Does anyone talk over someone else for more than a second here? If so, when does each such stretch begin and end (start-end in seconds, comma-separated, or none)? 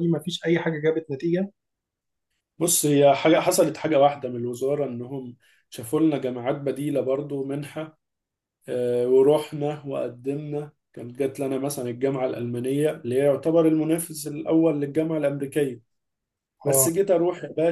none